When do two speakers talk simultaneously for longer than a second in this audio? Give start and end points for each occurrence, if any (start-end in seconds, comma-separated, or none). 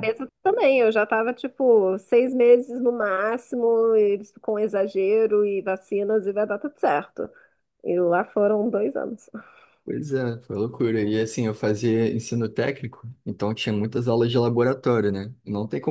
none